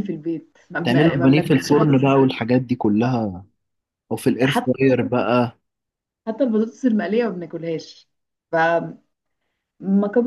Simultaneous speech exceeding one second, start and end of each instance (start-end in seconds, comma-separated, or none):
0.8-2.1